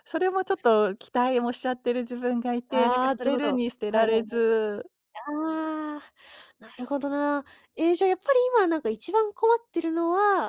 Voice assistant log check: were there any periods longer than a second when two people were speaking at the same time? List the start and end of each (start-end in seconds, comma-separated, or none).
2.7-4.4